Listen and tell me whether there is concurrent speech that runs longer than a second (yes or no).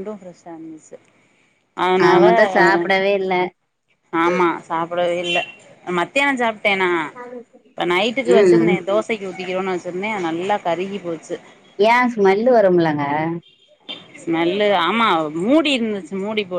no